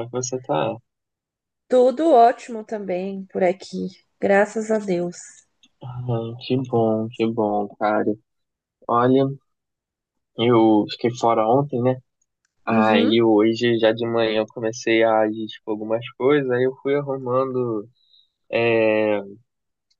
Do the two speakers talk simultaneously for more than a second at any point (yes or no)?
no